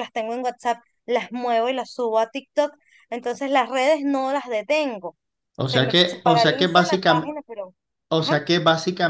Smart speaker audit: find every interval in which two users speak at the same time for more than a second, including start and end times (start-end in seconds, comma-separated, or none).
5.6-7.3